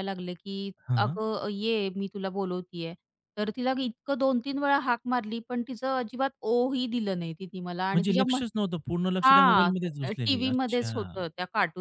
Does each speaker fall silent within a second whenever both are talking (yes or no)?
no